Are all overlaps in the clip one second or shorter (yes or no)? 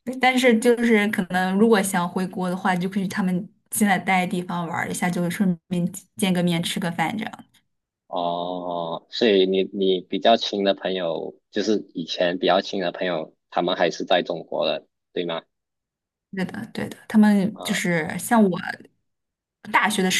yes